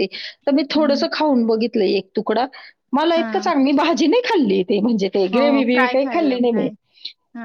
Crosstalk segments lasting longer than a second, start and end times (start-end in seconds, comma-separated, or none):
5.3-6.7